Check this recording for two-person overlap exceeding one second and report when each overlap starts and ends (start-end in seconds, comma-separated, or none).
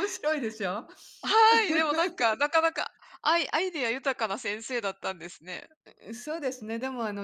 none